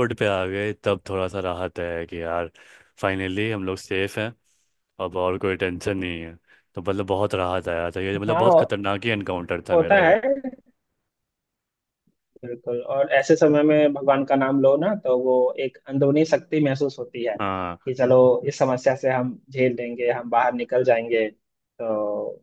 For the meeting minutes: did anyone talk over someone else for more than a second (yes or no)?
no